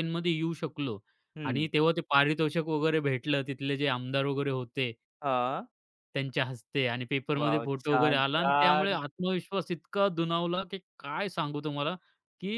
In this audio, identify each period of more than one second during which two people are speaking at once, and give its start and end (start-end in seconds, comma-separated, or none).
7.4-9.0